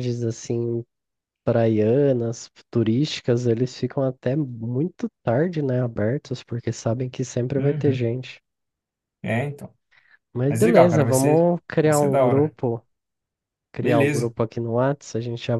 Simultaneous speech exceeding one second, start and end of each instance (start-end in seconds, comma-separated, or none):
10.5-12.6